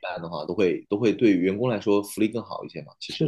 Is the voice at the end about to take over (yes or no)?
yes